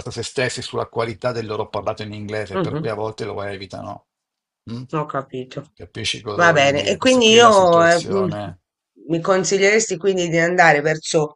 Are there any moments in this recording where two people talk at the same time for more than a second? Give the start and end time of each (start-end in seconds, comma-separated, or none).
6.3-8.3